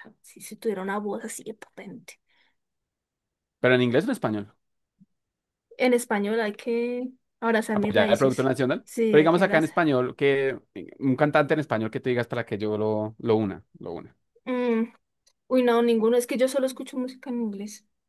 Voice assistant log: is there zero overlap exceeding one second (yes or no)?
no